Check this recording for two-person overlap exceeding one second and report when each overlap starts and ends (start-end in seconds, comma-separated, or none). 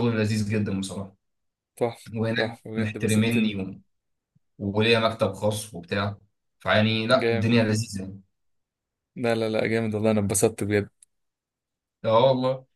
2.1-3.6